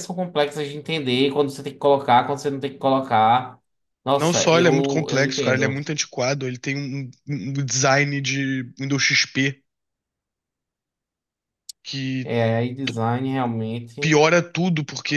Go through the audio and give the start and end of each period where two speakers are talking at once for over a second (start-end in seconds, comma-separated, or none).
4.2-5.8